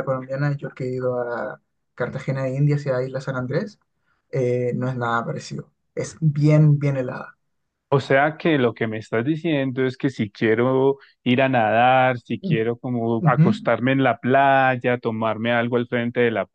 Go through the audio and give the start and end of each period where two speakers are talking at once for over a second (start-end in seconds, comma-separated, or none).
none